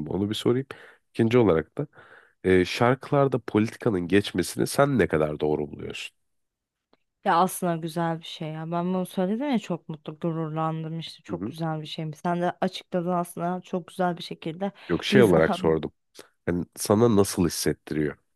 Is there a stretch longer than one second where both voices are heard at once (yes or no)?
no